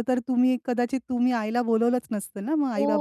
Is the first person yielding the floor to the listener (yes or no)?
yes